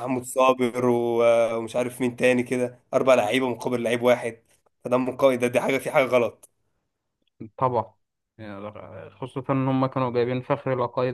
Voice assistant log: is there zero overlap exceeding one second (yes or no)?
yes